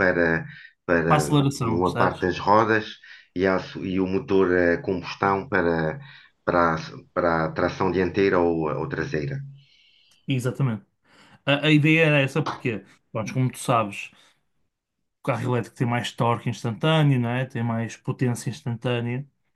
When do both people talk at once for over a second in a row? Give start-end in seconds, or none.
1.1-2.3